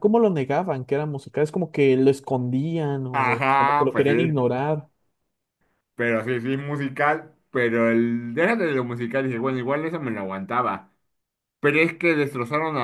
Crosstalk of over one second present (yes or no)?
yes